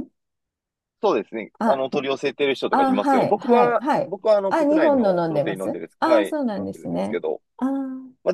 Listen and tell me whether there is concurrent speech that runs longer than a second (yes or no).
yes